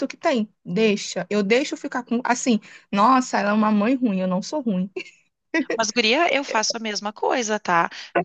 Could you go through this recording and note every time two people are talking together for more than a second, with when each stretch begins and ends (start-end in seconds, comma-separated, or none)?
none